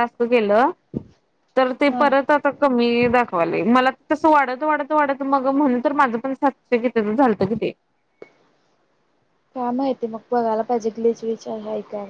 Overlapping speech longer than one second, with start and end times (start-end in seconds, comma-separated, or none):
none